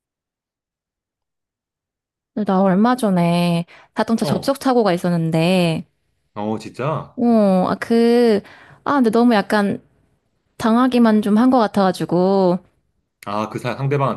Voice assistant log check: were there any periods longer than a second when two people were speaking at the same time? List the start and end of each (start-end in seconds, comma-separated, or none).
none